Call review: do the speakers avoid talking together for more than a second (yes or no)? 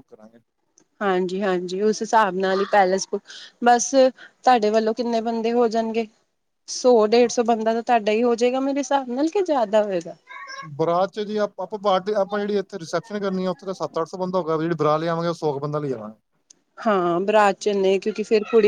yes